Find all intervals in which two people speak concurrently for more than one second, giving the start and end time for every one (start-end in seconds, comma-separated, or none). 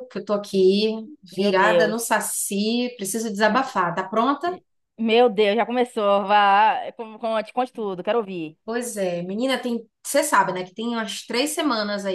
none